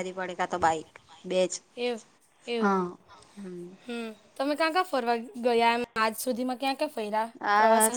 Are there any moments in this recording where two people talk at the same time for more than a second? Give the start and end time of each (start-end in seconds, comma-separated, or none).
none